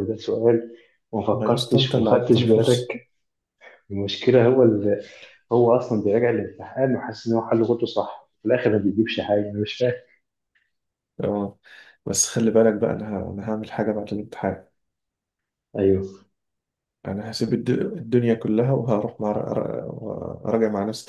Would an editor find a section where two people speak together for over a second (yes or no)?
yes